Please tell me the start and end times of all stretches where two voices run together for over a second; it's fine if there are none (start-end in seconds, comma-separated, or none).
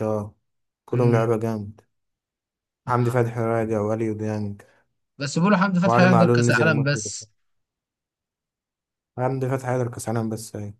5.8-7.1